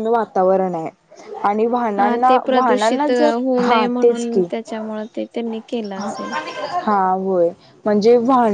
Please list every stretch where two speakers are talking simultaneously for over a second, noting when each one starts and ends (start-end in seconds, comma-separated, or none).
2.0-4.4